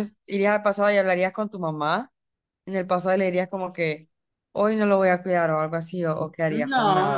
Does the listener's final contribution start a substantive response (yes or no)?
yes